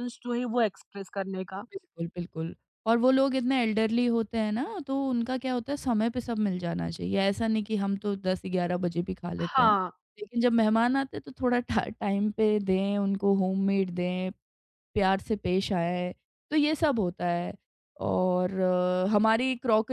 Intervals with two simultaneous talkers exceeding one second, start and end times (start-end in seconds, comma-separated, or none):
none